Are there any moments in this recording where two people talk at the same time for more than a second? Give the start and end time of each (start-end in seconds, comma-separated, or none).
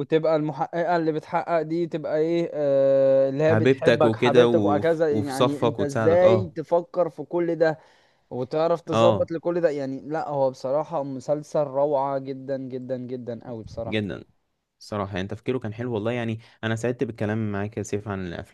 3.4-6.5